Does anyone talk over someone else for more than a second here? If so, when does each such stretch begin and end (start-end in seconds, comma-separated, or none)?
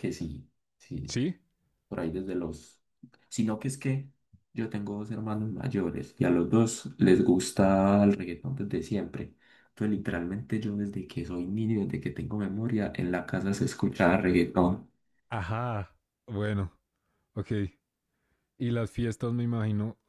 none